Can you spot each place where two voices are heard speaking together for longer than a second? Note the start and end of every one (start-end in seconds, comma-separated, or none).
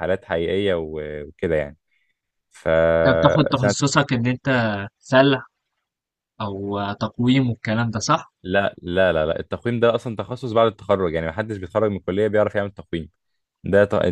none